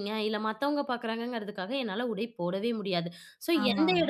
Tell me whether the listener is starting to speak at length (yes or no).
no